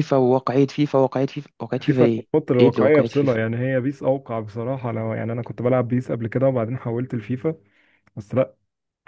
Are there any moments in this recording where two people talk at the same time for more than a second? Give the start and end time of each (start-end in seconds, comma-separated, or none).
1.8-3.4